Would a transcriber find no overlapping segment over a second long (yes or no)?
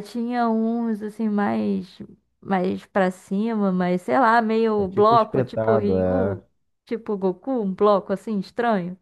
no